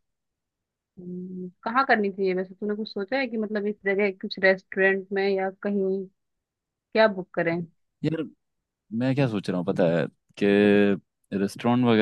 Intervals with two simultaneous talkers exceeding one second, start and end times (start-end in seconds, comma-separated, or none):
none